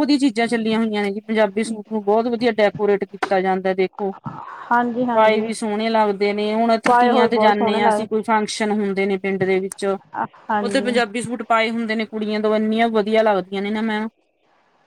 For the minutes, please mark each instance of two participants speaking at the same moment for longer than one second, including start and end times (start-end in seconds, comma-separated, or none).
6.9-8.2